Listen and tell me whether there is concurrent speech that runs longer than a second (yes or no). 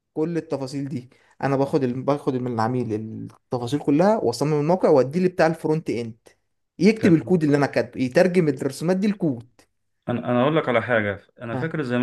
no